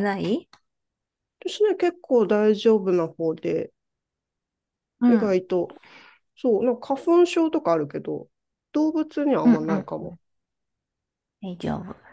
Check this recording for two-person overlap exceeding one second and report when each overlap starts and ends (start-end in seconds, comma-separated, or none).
none